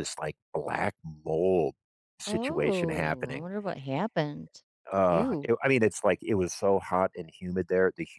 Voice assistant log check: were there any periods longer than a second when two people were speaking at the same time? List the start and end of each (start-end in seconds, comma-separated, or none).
2.3-3.5